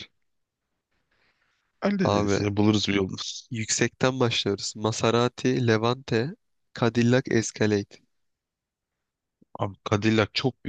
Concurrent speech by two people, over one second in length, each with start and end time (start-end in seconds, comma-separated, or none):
none